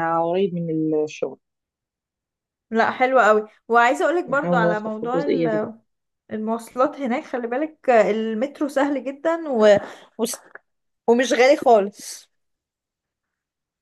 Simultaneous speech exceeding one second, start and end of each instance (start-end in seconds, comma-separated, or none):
4.3-5.7